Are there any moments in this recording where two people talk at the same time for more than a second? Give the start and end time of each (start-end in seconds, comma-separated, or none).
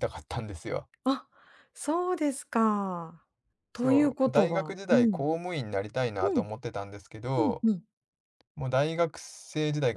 3.7-5.3